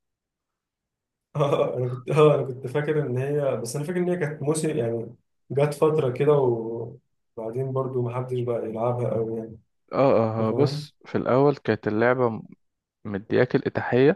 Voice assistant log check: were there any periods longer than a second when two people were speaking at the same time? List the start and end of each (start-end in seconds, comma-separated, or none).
none